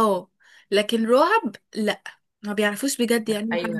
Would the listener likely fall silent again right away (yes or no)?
no